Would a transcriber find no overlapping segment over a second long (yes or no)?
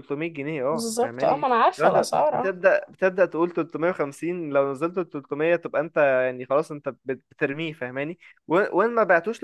no